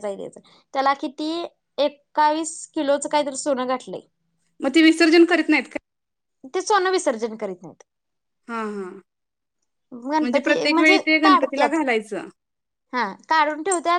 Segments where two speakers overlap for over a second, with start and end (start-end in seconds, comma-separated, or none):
10.2-11.8